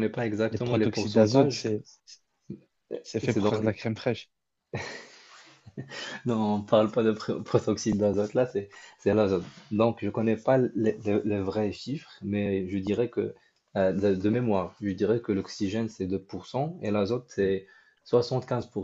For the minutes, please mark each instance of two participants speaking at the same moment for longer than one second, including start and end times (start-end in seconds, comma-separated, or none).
0.5-1.7